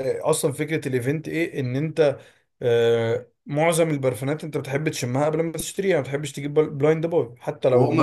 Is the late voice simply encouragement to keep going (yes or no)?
no